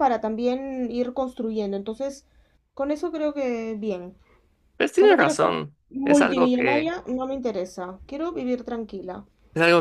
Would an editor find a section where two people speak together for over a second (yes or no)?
yes